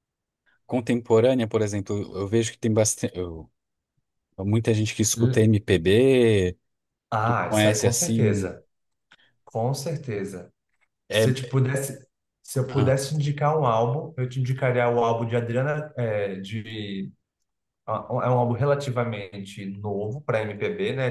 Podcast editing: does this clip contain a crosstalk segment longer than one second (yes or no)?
yes